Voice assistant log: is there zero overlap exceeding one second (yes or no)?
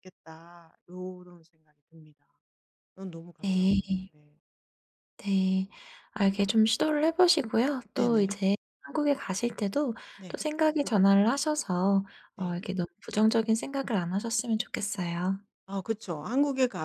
yes